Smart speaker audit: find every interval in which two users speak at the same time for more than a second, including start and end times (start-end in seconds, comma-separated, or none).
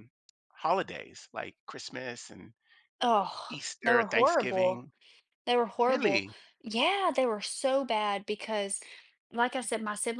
3.5-4.8